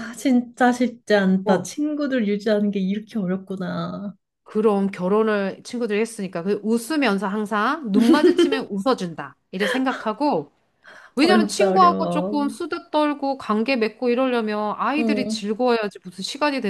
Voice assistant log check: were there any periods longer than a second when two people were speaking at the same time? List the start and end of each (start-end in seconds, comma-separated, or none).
11.2-12.5